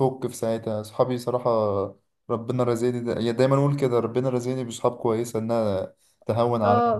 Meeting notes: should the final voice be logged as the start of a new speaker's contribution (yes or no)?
yes